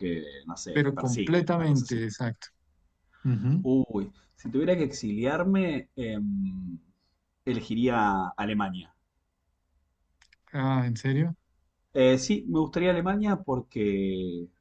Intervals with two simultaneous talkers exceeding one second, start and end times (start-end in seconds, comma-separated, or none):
0.7-2.0